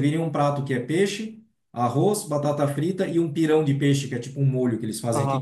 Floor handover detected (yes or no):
yes